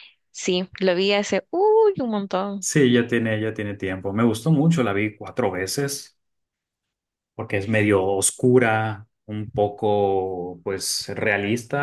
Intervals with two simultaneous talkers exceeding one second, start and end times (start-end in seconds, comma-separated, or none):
none